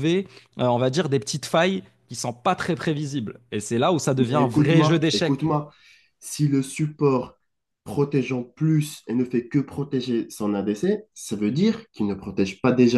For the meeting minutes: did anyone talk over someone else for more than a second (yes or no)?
yes